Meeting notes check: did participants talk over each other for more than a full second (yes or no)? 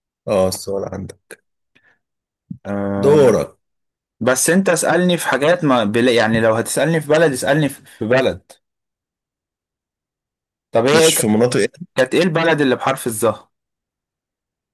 no